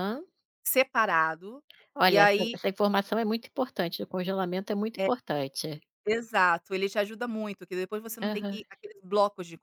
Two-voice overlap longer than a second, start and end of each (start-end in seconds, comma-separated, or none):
none